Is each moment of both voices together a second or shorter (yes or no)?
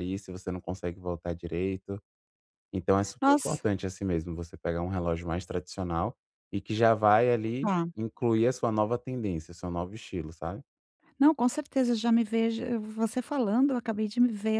yes